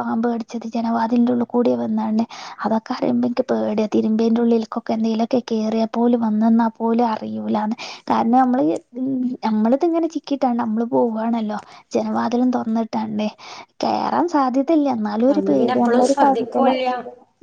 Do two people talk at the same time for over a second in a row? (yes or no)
yes